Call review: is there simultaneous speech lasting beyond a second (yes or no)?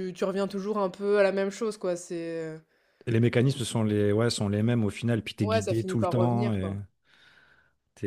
yes